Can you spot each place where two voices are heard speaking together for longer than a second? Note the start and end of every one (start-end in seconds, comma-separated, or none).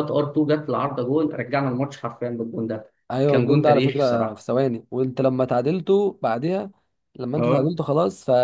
3.3-4.5